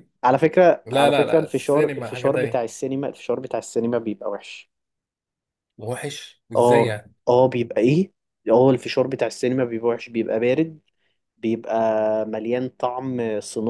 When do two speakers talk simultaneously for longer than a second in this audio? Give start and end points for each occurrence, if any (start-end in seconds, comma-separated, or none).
0.8-2.7